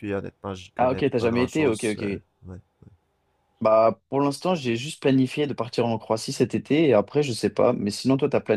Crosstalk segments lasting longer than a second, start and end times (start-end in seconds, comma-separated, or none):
0.8-2.1